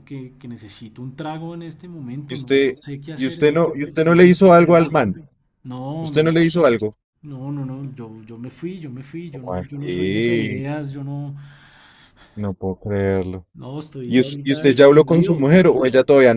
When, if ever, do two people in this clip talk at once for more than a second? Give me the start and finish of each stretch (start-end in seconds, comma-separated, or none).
2.3-5.0, 9.3-10.6, 14.1-15.6